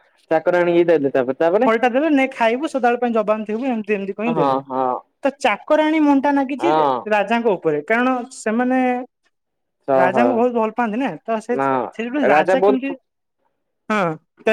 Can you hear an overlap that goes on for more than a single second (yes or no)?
no